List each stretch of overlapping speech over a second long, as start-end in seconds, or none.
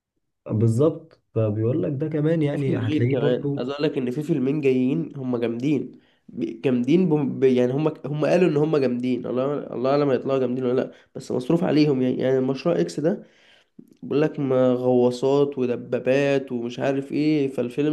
2.5-3.7